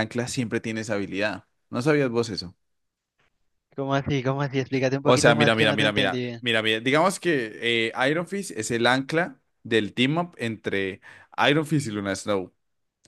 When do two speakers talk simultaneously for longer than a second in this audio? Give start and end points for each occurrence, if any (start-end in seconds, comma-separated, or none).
5.0-6.4